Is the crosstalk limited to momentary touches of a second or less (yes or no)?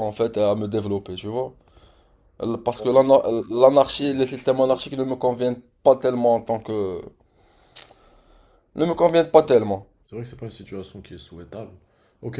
yes